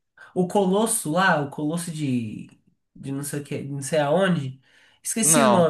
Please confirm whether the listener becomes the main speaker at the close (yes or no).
no